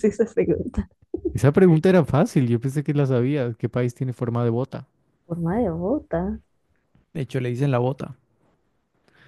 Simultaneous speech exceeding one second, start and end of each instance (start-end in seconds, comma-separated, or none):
none